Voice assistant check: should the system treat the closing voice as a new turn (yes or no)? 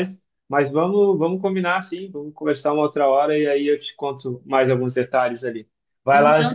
yes